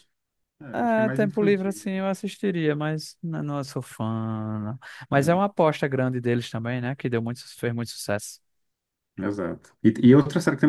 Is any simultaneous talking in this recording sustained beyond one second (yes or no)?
yes